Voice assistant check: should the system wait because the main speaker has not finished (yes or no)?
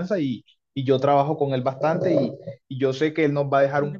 yes